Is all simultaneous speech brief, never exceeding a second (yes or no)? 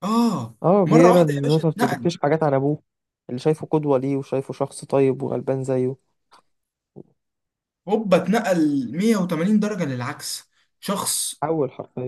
no